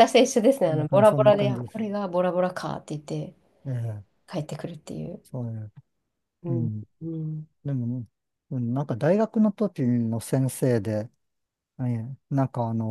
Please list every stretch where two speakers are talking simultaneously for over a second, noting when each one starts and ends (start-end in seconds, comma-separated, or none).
0.6-1.8